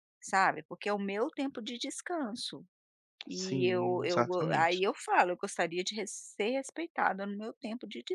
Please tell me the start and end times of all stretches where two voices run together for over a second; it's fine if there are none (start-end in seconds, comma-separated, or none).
3.3-4.8